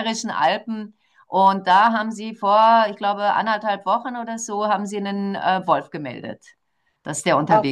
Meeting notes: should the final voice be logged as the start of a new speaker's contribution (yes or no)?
yes